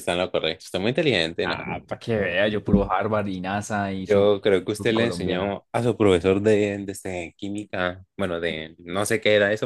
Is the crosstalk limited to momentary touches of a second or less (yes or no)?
no